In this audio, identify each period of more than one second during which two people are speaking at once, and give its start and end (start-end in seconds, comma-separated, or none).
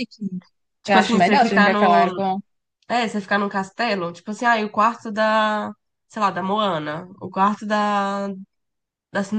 0.8-2.1